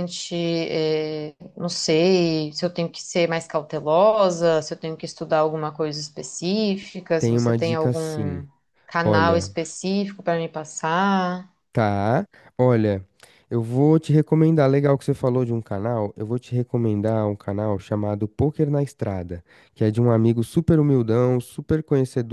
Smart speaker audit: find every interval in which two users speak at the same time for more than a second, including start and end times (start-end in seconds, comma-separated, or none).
7.2-8.4